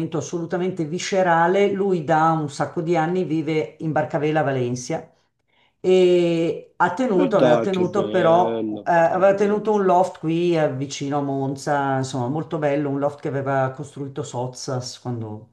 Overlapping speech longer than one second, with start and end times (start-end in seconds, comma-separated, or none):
7.2-9.7